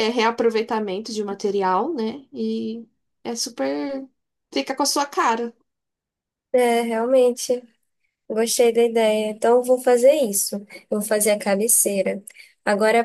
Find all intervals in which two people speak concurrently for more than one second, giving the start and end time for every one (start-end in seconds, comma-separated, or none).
none